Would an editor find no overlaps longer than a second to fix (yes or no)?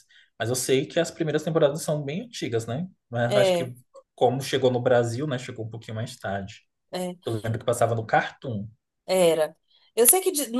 yes